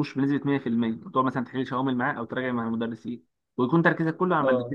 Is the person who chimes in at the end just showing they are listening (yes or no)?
yes